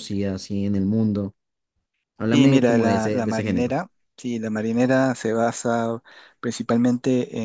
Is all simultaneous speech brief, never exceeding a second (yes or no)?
no